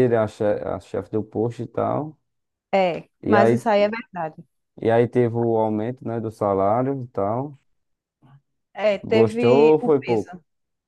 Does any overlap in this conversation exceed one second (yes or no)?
yes